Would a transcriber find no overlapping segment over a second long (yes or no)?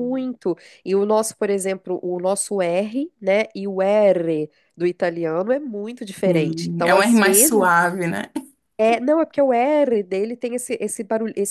no